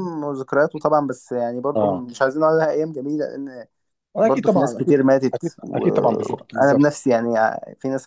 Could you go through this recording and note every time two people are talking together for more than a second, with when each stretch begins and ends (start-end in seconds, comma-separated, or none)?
4.2-7.0